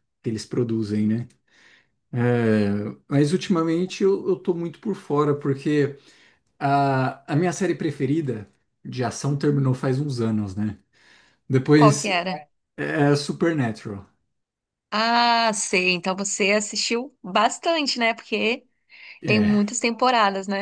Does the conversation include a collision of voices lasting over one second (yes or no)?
no